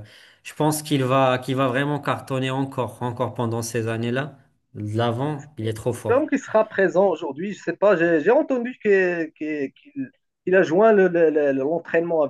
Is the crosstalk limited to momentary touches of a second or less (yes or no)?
yes